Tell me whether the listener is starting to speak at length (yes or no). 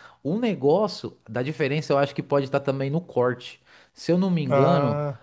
no